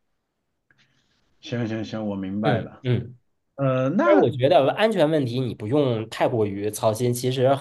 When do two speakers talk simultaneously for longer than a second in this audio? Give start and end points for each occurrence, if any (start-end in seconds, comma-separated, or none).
none